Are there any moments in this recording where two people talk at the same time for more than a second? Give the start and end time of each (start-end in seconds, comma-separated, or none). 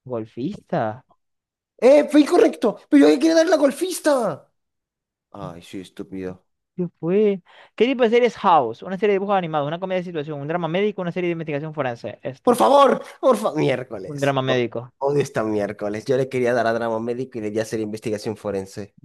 none